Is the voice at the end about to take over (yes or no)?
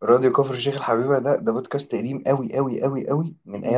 no